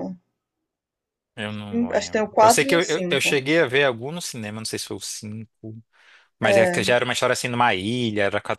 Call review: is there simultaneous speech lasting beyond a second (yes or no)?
yes